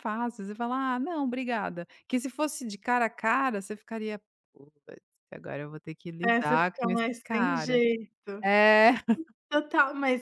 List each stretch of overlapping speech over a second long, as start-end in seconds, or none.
6.2-7.8